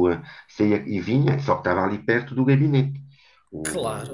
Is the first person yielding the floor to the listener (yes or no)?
yes